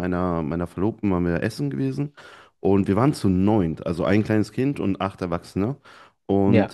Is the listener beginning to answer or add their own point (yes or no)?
no